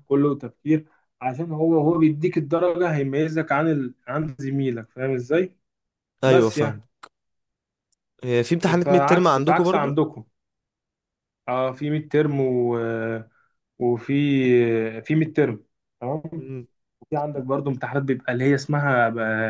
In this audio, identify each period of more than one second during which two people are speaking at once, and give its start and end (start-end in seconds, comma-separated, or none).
8.8-10.0